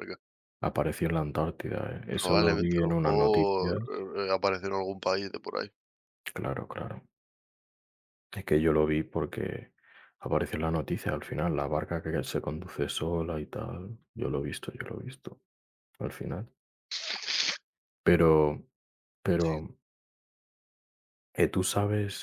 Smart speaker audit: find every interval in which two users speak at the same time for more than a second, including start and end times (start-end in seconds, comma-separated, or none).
2.1-3.8